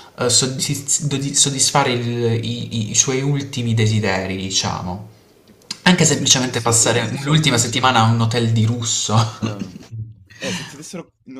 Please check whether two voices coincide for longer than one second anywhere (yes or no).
yes